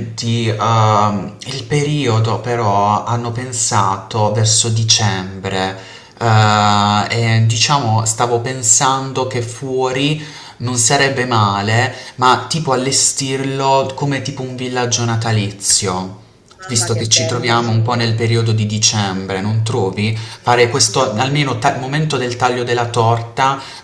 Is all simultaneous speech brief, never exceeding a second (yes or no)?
no